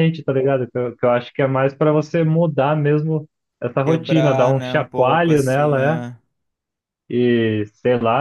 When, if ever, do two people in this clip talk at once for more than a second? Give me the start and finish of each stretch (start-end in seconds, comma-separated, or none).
3.8-6.0